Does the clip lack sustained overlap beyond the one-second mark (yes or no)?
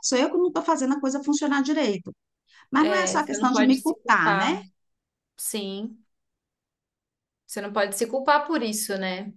no